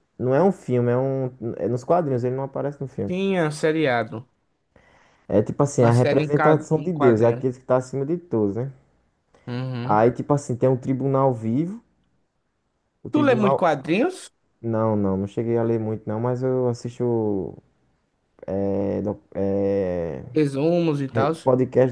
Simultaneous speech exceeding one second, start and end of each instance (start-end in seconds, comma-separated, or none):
5.8-7.4